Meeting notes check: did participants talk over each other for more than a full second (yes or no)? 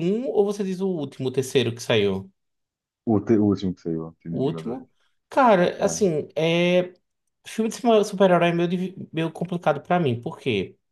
no